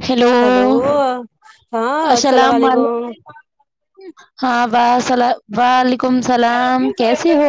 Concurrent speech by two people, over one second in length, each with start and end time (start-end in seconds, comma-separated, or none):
none